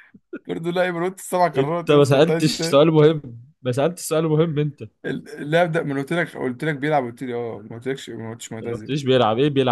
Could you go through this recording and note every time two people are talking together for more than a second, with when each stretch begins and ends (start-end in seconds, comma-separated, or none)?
1.6-2.8